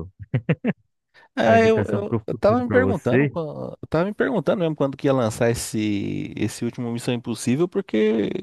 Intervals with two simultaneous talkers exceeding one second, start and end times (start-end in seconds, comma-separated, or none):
1.5-3.3